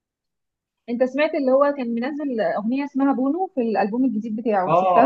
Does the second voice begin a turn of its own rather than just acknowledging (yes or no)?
yes